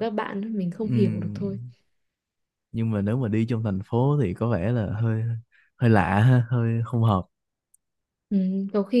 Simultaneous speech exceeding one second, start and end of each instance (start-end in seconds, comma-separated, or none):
none